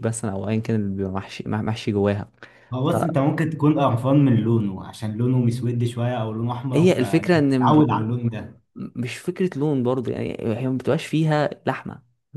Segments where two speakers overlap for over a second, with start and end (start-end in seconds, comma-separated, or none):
6.8-8.1